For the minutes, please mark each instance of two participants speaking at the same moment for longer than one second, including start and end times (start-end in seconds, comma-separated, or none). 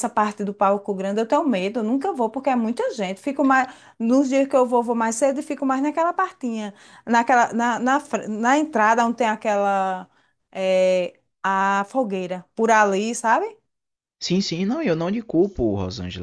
none